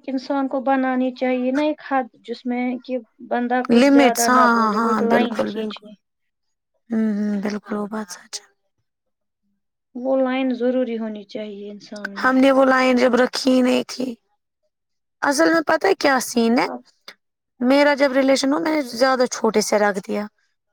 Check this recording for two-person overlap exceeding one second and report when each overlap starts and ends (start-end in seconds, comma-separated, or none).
3.7-5.8